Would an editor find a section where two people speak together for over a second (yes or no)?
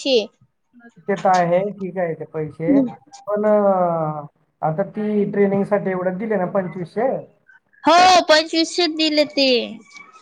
no